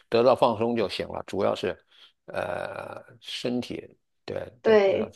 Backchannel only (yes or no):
no